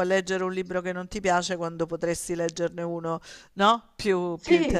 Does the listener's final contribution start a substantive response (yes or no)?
yes